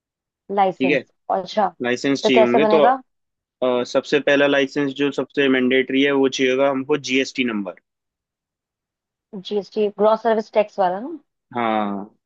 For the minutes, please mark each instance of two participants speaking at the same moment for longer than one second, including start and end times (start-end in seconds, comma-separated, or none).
none